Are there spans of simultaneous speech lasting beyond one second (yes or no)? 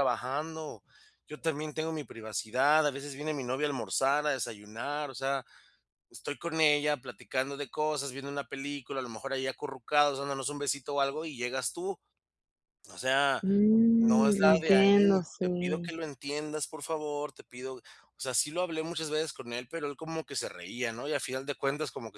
yes